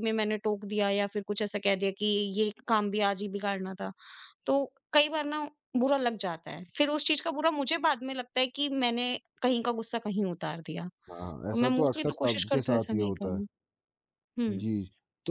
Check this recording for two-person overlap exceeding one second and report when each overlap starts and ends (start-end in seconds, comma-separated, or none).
11.5-13.4